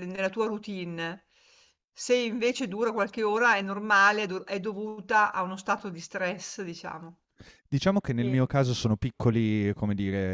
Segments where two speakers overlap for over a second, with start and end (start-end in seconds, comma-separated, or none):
none